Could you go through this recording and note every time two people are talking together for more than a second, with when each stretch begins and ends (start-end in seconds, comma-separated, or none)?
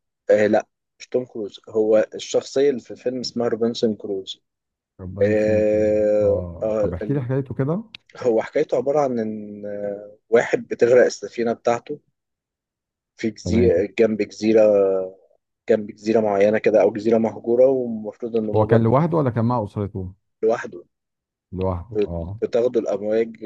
5.2-7.3